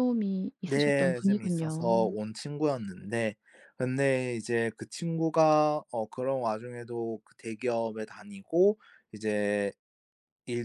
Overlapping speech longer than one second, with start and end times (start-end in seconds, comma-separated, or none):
0.7-2.2